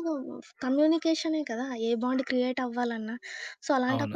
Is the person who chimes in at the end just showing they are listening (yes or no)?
yes